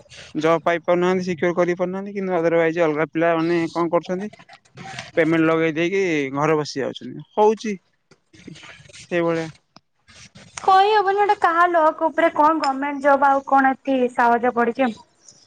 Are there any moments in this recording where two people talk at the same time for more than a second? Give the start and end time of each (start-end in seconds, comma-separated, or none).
none